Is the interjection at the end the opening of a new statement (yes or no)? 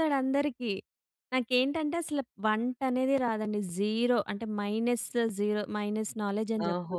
yes